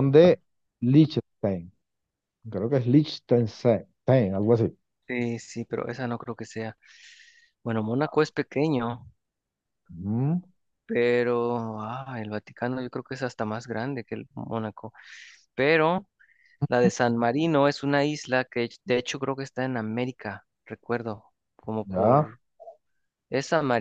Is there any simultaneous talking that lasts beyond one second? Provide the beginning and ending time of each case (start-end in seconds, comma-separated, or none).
none